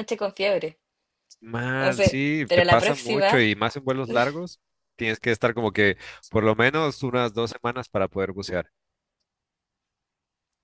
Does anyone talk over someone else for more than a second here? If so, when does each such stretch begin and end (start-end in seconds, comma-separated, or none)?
1.8-3.5